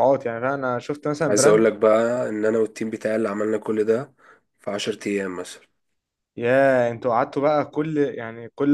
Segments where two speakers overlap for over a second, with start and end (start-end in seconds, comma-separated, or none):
none